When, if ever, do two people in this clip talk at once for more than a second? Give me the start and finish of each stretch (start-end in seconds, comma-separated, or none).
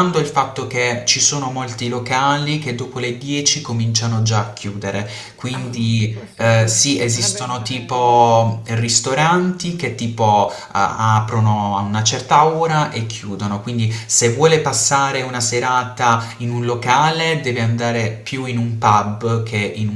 5.5-8.4